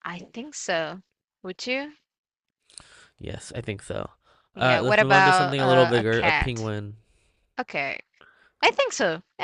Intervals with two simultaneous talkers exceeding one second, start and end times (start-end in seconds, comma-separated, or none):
4.6-6.7